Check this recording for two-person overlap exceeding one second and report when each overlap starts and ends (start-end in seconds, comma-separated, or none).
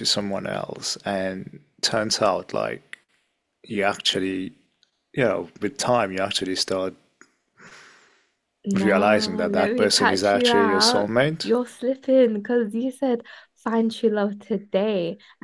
8.7-11.5